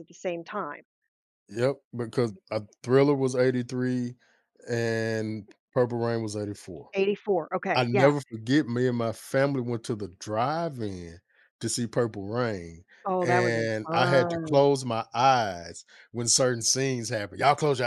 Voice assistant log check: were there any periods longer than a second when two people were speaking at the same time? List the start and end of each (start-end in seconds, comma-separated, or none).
13.2-14.7